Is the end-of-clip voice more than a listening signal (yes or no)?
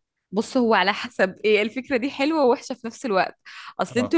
no